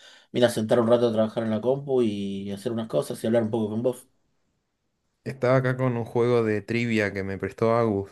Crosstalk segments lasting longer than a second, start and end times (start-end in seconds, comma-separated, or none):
none